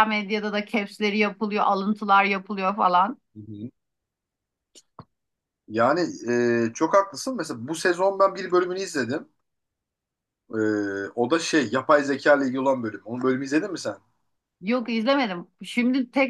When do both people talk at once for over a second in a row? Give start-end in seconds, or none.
none